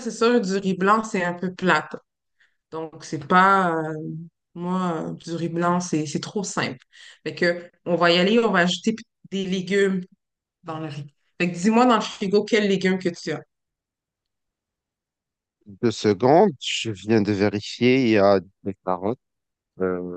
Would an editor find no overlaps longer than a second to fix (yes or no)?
yes